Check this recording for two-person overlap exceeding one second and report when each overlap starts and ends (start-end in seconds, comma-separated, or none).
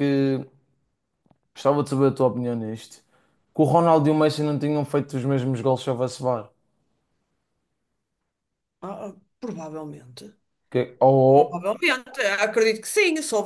none